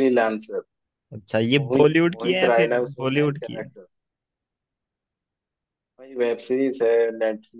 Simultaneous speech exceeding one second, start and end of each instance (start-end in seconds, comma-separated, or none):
1.6-3.7